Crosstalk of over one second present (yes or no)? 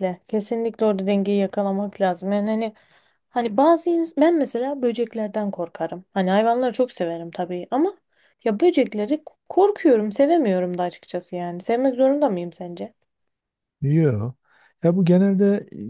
no